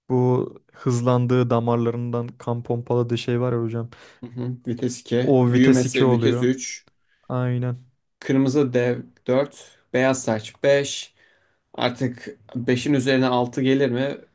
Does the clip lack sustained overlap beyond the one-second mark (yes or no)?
no